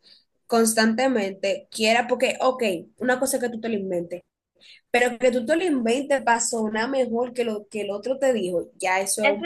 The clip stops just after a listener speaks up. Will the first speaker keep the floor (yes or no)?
no